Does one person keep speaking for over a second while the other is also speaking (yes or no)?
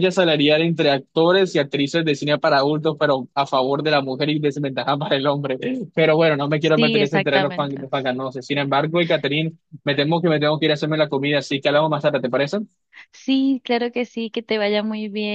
yes